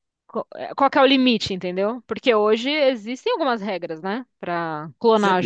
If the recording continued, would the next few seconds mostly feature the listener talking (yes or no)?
yes